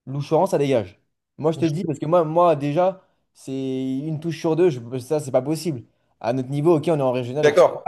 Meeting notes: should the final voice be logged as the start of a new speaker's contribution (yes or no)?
yes